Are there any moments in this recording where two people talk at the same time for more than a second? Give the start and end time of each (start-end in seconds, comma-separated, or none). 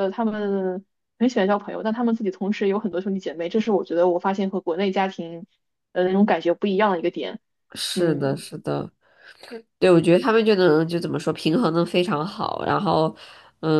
none